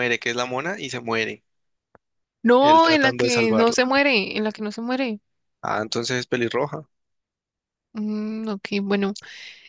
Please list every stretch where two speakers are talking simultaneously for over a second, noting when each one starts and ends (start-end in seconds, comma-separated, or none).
2.6-3.9